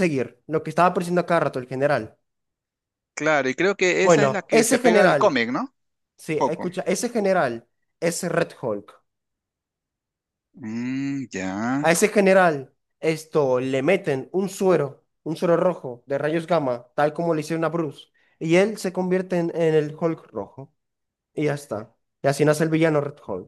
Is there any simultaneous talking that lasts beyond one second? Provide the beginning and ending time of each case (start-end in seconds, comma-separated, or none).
4.0-5.4